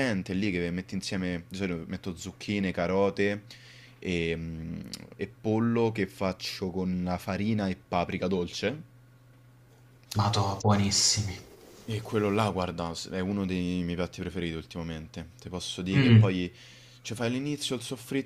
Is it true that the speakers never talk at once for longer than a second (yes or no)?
yes